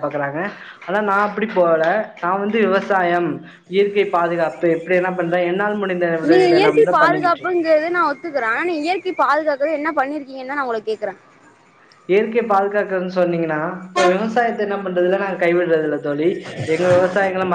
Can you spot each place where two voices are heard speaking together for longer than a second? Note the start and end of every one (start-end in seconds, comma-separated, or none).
none